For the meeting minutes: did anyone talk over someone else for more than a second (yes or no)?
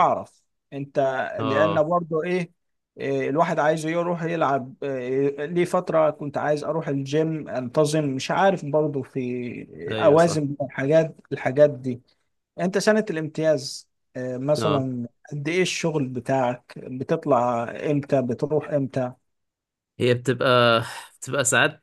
no